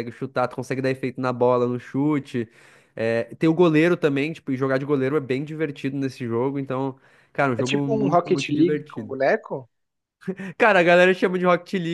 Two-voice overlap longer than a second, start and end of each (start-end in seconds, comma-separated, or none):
7.6-9.1